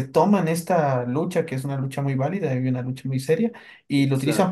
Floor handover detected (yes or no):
no